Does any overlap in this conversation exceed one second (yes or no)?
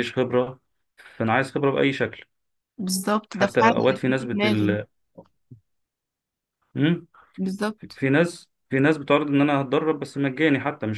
yes